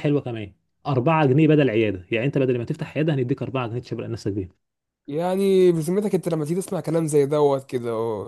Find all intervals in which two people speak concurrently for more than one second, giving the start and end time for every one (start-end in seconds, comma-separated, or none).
none